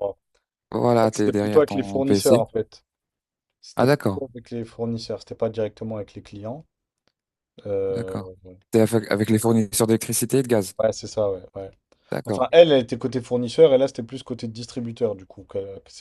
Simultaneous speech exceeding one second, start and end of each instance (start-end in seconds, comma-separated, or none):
1.0-2.4